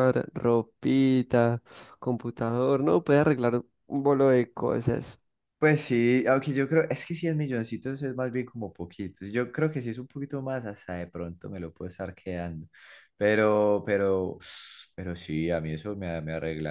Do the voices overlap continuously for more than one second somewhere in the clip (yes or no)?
no